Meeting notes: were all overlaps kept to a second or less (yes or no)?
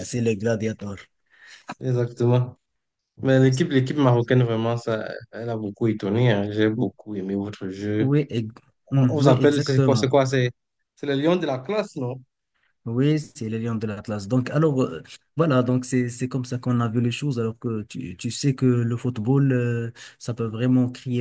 no